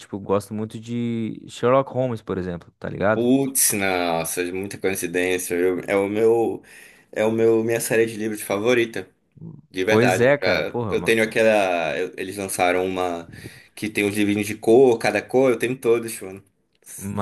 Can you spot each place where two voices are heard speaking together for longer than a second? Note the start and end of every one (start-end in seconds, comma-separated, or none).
9.8-11.2